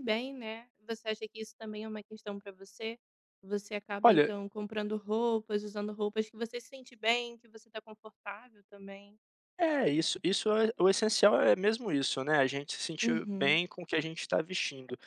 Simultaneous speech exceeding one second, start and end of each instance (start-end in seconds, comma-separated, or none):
none